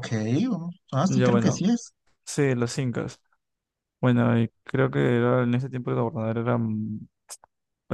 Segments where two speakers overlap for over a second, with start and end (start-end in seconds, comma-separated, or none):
none